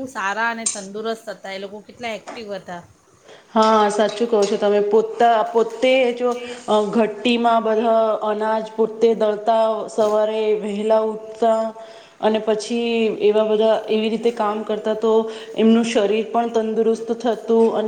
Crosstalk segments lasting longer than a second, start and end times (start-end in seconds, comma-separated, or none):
none